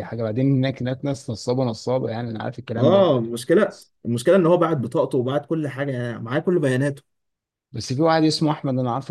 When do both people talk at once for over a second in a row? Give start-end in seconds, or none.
none